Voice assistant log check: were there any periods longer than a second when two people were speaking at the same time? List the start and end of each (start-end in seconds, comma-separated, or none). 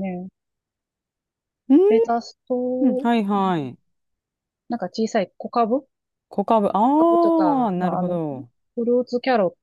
7.0-8.2